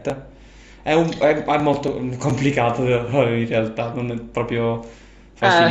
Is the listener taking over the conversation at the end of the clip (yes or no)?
no